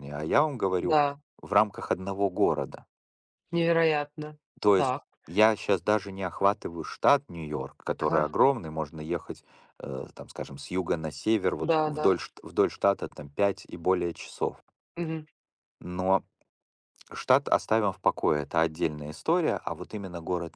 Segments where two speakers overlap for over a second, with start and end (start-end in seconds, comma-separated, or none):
none